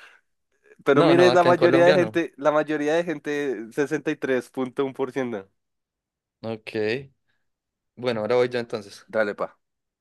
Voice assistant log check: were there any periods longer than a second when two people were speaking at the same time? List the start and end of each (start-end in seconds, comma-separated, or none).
0.9-2.2